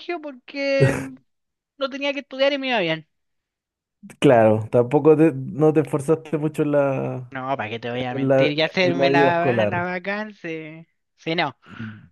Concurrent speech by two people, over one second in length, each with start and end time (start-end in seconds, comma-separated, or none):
8.1-9.8